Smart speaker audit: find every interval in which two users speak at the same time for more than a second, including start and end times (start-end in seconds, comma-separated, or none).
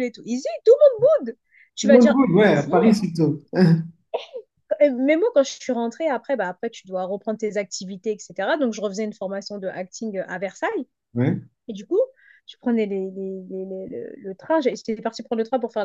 1.8-3.1